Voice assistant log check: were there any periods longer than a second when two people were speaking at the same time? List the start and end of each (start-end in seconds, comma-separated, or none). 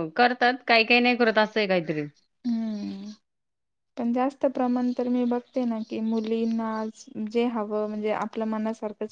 none